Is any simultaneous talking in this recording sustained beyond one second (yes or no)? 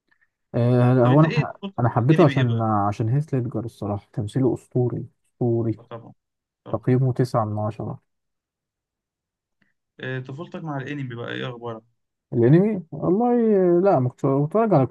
yes